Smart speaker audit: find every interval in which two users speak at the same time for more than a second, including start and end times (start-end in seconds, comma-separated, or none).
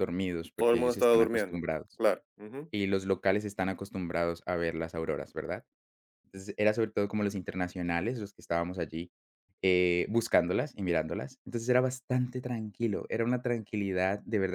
0.6-2.0